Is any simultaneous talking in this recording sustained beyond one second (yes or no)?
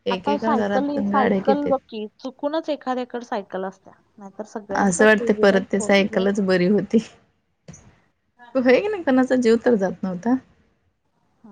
yes